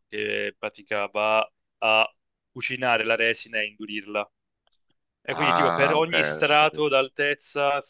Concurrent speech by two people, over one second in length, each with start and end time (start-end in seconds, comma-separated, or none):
5.3-6.9